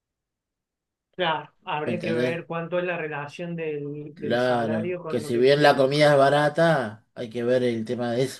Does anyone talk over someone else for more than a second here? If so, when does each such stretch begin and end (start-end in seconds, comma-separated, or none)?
4.1-5.9